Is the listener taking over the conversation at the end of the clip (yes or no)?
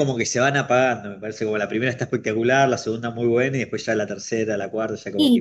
yes